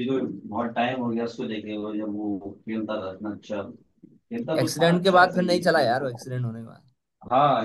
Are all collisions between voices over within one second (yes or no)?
no